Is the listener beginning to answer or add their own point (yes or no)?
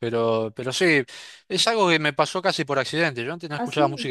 no